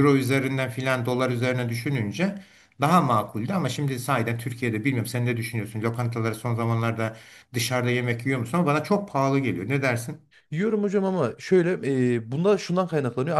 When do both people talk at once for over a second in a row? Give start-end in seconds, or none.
none